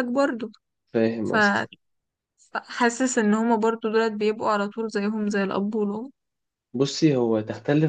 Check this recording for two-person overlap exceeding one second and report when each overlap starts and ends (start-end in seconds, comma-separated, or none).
none